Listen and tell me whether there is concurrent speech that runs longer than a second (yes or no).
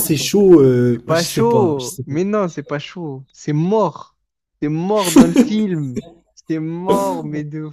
yes